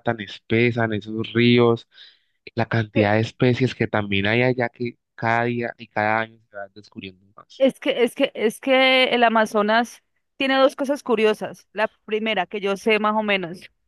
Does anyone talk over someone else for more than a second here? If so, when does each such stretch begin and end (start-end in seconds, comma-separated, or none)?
none